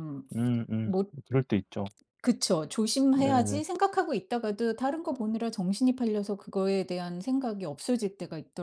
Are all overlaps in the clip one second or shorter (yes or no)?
yes